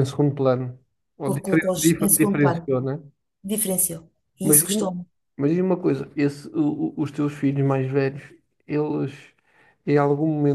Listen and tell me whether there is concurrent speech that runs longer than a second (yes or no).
yes